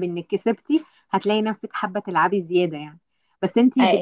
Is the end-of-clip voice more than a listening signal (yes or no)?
no